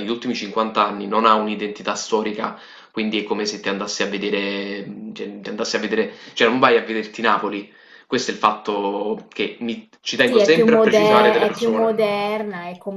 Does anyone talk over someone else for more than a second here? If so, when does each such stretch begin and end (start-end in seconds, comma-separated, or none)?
10.3-12.1